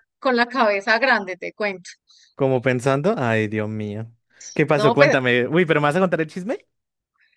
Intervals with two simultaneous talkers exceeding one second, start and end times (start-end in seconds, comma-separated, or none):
none